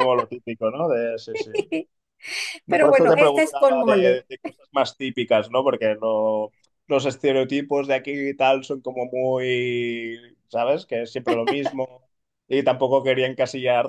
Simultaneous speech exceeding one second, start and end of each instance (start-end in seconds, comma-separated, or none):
2.7-4.3